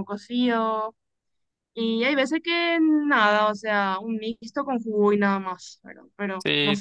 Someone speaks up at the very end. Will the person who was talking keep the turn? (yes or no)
no